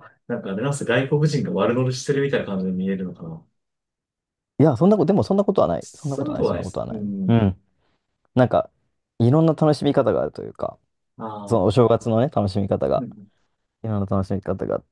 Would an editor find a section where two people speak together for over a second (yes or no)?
yes